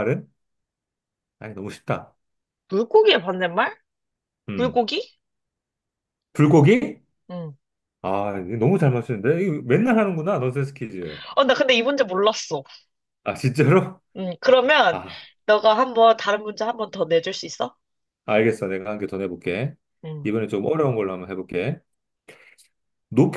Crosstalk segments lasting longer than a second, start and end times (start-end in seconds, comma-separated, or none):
none